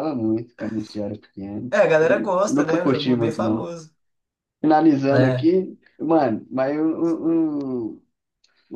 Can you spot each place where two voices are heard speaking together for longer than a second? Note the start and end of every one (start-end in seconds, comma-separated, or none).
1.7-3.7